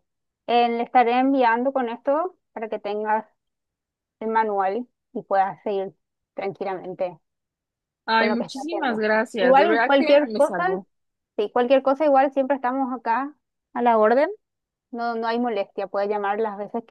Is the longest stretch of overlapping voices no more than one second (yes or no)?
no